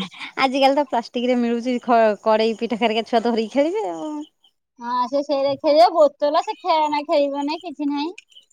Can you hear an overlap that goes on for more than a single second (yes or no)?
no